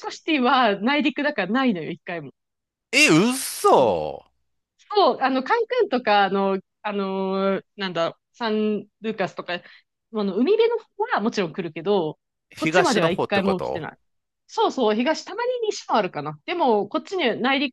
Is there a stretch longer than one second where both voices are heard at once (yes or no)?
yes